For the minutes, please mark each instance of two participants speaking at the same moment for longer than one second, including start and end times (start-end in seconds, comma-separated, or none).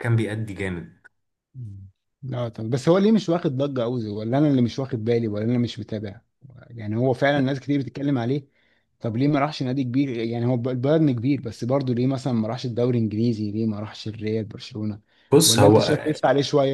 none